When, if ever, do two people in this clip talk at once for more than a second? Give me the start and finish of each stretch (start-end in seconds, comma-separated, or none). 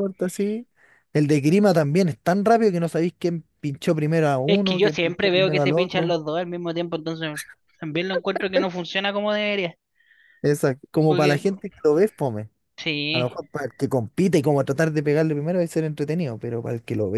4.5-6.1